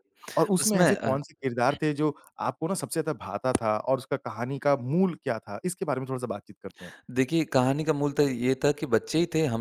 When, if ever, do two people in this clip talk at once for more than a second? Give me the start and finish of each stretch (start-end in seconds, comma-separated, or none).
none